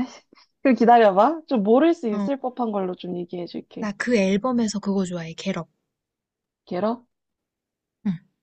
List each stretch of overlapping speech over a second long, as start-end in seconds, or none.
none